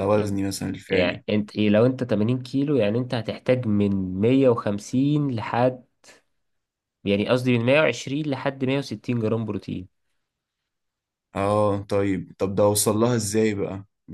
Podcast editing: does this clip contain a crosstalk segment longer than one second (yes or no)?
no